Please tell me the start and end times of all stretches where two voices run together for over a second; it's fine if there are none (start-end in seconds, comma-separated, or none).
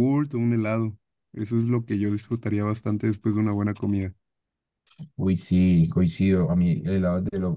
none